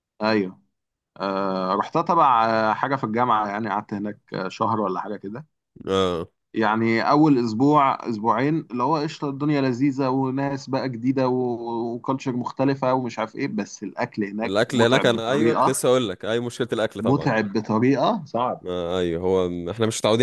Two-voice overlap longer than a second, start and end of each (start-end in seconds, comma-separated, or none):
14.4-15.8